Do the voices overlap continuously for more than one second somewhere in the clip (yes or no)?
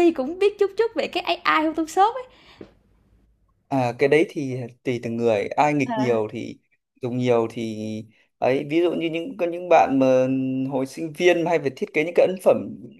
no